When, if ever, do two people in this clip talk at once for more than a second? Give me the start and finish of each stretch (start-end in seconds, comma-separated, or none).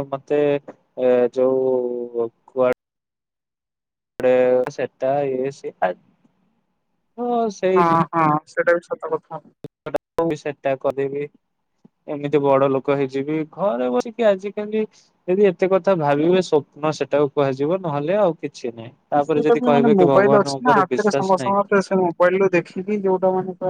19.2-21.6